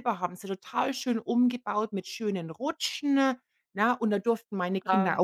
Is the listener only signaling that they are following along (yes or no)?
yes